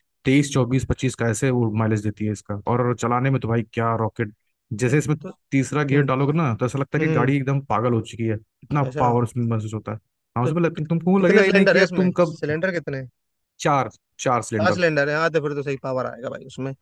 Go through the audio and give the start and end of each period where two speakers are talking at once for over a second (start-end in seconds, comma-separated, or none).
10.4-12.4